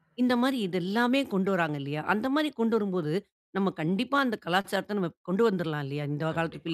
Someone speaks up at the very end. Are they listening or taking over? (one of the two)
taking over